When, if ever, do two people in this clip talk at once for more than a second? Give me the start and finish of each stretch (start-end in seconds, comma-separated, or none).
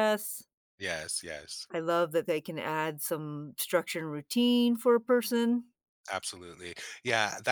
none